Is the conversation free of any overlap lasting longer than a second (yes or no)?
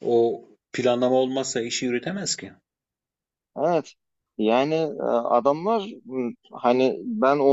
yes